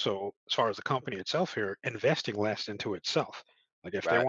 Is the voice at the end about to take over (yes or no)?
no